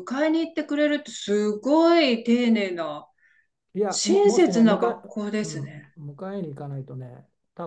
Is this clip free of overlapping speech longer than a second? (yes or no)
no